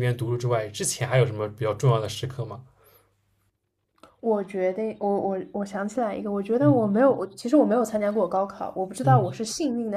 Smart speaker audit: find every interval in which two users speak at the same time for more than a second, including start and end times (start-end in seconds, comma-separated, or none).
none